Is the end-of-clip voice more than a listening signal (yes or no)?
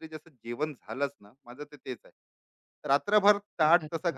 no